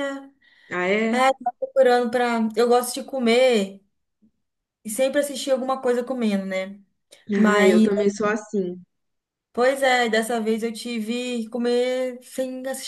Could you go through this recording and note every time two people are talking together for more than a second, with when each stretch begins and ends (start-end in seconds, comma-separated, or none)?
none